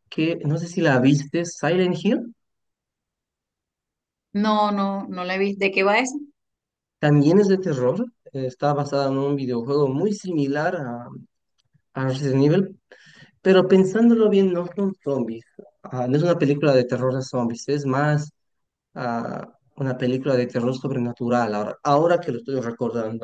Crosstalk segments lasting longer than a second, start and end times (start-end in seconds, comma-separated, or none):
none